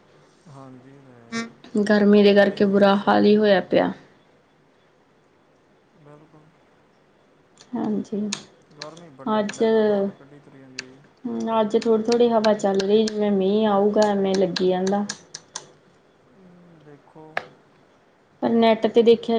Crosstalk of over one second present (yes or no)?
yes